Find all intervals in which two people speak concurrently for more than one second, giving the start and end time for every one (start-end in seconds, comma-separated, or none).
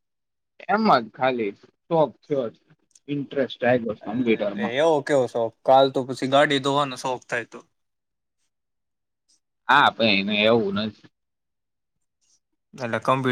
none